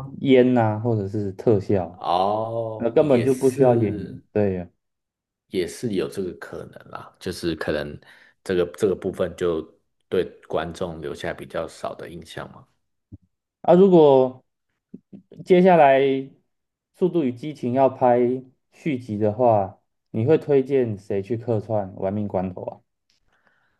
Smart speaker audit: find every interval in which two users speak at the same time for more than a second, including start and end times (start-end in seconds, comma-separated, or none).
2.8-4.2